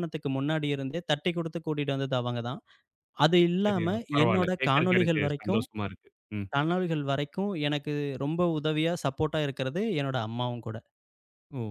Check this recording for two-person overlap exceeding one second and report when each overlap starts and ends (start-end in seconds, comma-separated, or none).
3.6-5.6